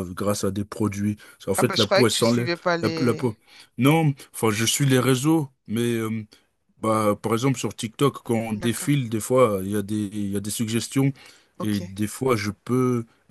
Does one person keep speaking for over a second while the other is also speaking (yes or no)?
yes